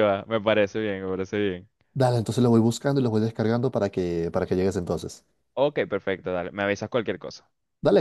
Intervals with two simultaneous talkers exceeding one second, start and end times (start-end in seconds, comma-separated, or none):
none